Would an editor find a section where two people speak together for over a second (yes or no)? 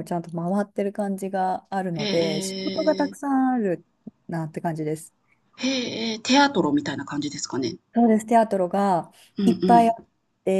yes